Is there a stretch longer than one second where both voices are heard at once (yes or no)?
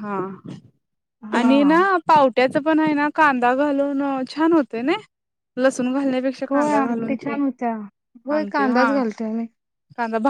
no